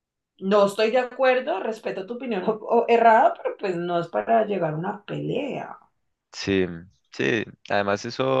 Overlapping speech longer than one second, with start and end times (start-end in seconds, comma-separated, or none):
none